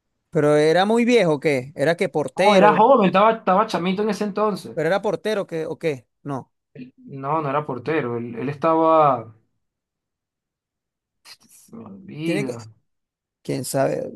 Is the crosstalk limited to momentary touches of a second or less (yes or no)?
yes